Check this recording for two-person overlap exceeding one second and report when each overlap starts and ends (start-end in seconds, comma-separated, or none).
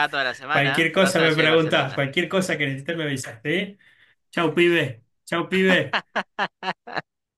0.5-2.1